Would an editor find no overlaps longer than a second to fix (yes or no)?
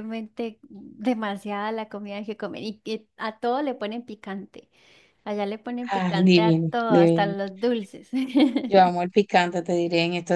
no